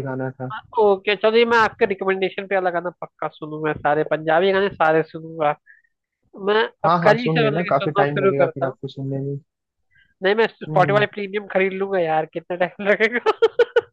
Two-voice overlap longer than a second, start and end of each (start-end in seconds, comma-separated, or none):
6.8-8.8